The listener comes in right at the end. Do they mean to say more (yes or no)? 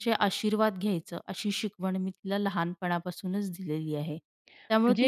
no